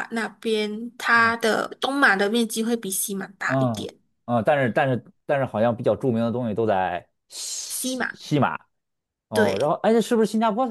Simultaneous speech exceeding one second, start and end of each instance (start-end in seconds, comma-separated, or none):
none